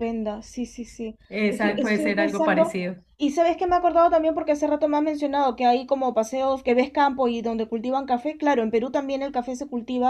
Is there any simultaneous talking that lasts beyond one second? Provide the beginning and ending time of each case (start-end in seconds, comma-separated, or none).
1.3-3.0